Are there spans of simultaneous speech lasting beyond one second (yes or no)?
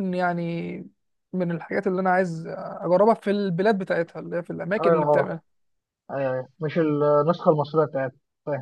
no